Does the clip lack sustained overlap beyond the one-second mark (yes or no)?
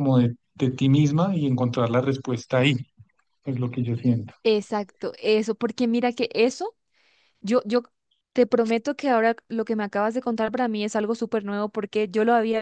yes